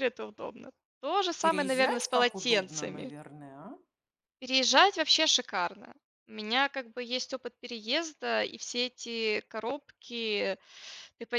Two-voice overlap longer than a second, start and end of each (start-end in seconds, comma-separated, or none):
1.4-3.1